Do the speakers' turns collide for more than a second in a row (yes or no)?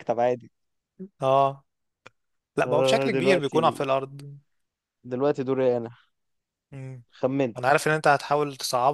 yes